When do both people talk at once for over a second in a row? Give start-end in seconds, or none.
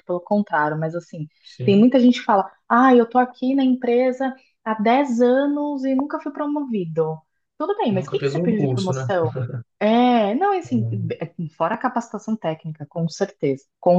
7.9-9.1